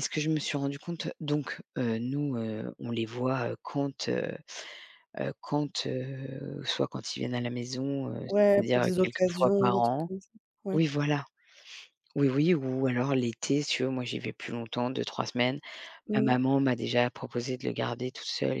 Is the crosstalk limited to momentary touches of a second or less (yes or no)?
no